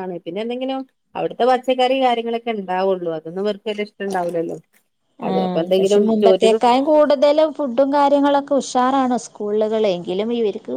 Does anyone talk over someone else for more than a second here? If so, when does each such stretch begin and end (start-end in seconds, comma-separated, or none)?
none